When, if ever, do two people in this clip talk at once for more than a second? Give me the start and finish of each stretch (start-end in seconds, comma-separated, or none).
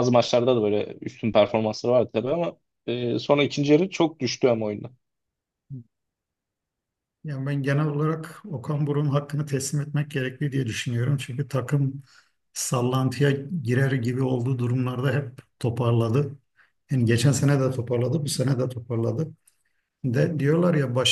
none